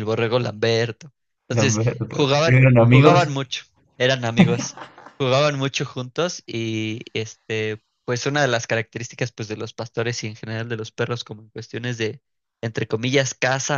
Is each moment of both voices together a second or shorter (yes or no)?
no